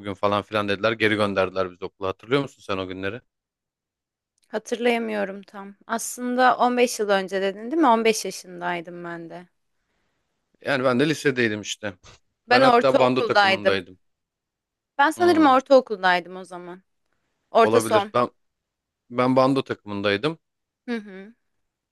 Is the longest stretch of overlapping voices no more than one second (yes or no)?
no